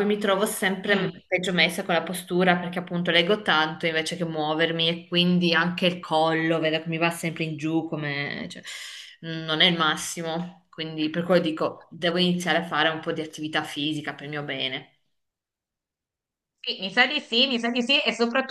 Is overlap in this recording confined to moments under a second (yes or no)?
yes